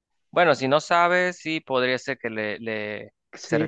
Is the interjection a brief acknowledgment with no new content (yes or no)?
no